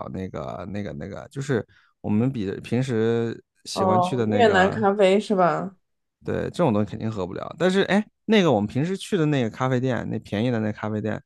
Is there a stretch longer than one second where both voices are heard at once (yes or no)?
yes